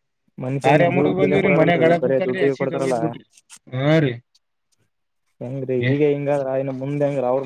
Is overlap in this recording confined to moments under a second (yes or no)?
no